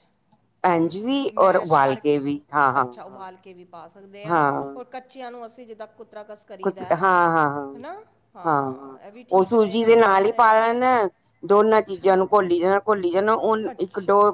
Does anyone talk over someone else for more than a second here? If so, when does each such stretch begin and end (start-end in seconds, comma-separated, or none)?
9.4-10.7